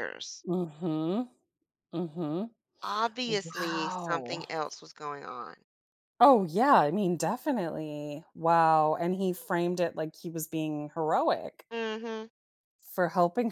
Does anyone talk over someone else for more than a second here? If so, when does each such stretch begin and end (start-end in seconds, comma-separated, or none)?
3.3-4.5